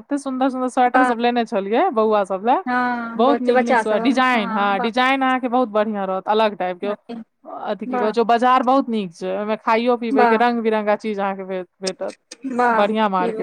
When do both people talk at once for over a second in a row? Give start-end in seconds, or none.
3.2-4.9